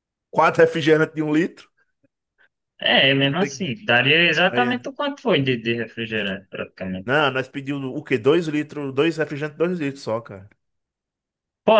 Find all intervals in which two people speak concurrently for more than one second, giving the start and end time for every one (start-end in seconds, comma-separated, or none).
none